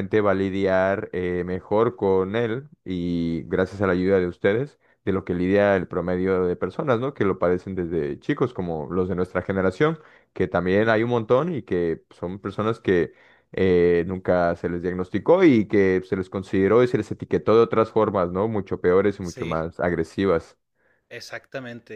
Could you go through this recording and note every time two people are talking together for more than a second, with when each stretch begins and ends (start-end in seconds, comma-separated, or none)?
none